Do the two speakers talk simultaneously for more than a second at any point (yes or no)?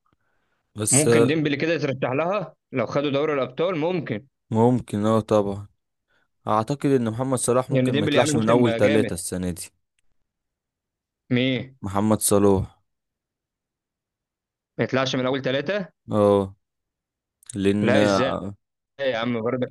yes